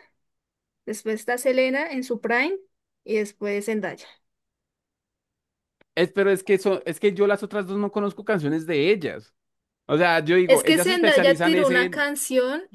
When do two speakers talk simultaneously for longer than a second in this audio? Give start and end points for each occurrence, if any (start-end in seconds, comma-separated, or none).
10.4-12.1